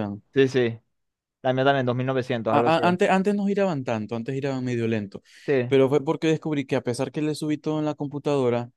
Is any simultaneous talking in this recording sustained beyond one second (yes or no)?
no